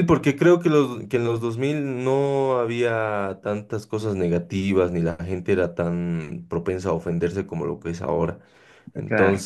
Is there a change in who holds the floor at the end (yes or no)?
no